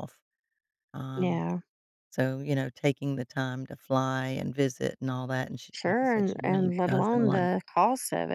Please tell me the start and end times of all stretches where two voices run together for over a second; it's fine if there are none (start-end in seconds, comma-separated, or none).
5.7-7.5